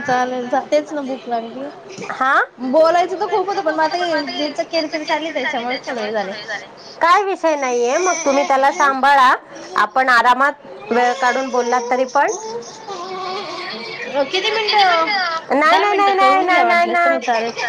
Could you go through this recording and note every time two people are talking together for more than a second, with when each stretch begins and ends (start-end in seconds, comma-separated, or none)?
15.6-17.2